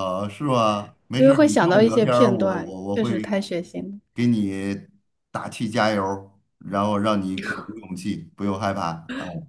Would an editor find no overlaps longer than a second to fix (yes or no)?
no